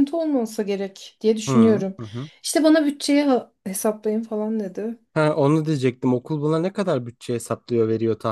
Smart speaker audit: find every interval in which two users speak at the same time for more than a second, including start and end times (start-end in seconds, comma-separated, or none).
none